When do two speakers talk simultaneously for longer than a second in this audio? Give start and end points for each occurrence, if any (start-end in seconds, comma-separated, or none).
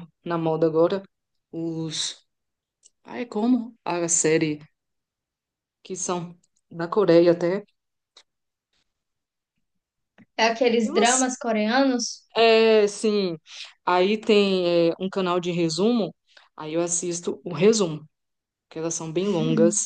none